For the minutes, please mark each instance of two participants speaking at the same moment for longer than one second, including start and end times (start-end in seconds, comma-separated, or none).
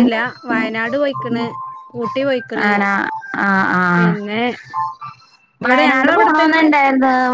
none